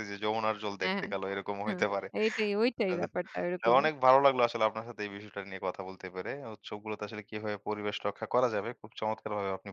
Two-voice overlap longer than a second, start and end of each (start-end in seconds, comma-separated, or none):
none